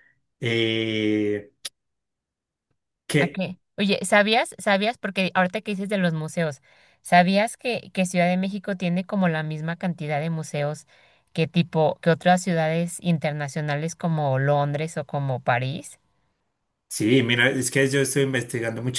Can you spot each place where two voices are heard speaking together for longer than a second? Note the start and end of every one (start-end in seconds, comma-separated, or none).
none